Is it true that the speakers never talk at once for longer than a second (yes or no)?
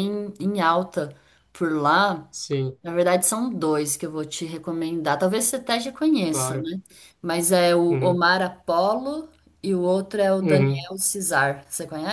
yes